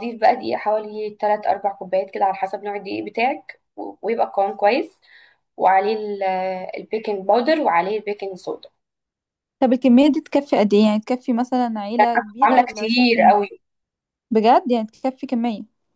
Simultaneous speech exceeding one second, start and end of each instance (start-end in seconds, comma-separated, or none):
12.0-13.3